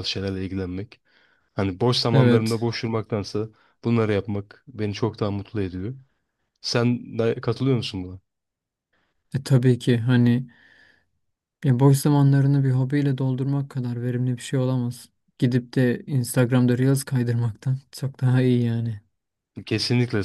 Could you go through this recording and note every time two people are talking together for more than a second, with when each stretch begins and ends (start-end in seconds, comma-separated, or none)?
none